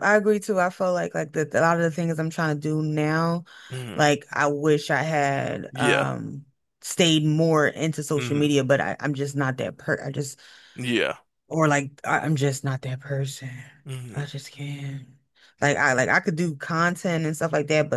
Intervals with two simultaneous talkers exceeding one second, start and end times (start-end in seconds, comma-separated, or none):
none